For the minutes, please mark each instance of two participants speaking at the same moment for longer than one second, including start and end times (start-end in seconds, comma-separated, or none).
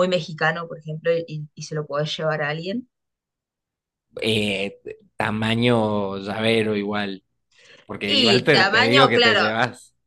8.1-9.4